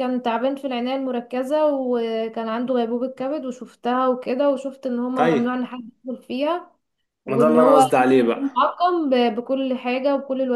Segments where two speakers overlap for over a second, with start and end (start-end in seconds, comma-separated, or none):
7.3-8.7